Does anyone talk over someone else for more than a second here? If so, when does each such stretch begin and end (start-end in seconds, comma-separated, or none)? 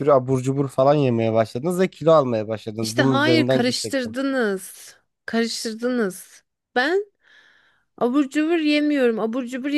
2.8-4.2